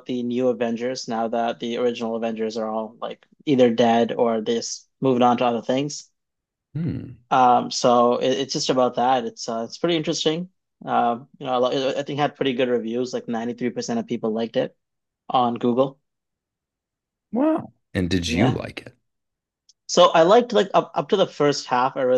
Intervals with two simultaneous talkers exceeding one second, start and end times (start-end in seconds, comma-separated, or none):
none